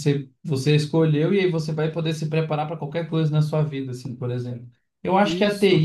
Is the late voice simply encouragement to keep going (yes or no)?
yes